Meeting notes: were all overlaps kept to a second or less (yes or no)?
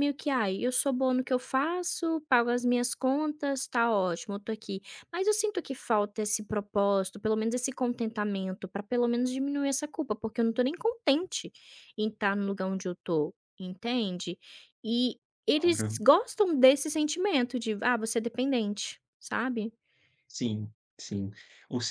yes